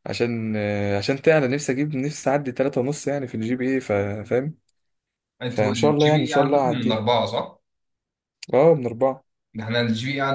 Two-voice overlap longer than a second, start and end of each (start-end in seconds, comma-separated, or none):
5.5-7.0